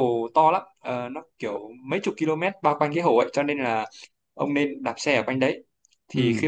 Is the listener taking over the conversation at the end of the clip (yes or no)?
no